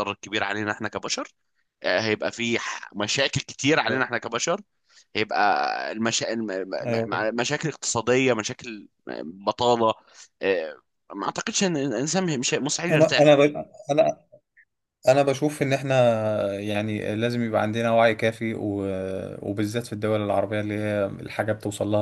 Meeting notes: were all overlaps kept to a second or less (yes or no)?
yes